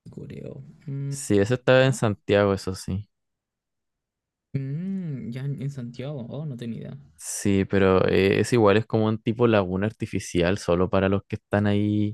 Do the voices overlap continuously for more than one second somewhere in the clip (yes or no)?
no